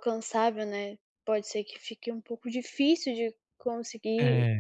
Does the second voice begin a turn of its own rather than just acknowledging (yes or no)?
no